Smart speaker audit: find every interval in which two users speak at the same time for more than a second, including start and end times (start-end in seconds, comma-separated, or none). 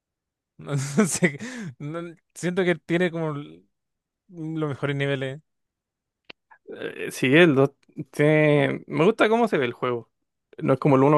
none